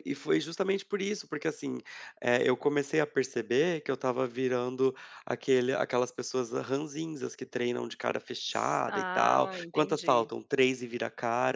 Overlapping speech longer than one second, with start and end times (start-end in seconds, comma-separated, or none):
8.5-10.3